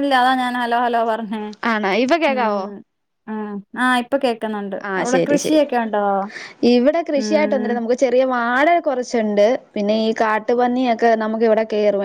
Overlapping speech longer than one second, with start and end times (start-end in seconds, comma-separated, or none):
none